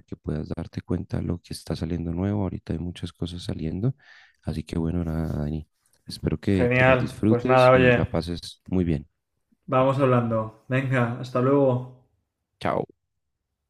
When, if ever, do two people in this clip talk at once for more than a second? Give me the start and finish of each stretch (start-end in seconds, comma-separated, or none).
6.5-8.1